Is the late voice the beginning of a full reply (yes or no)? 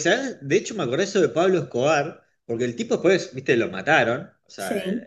no